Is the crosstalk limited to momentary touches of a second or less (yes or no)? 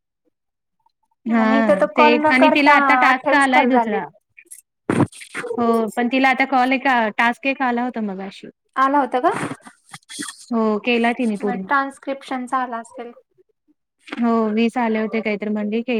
no